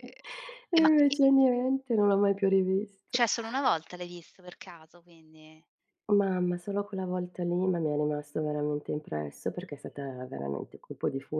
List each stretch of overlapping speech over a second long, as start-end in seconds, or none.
none